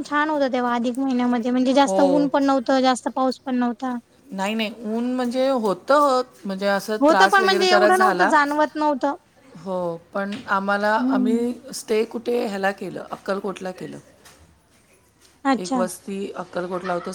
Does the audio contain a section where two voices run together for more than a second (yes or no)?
yes